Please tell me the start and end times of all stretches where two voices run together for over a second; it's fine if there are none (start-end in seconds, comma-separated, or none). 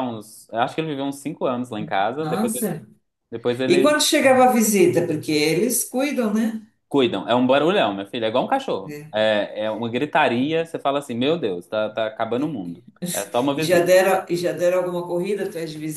none